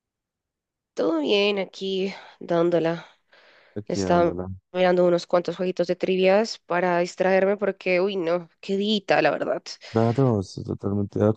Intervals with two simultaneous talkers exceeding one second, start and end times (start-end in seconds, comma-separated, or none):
none